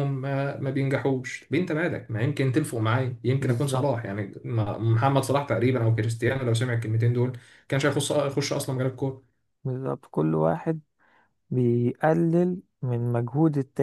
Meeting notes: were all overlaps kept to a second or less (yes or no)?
yes